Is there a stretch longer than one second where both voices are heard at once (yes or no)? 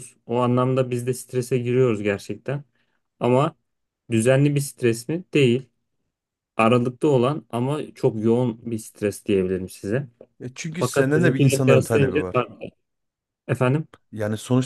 yes